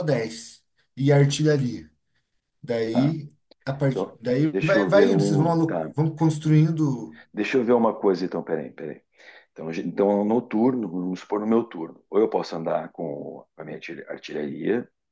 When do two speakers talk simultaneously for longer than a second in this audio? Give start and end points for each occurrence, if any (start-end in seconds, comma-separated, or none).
3.9-5.9